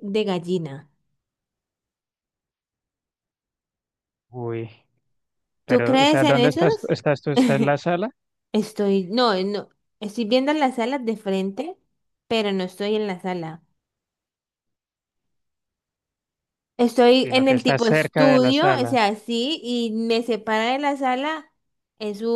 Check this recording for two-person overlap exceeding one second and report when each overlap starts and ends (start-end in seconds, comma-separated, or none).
5.7-6.9, 17.2-18.9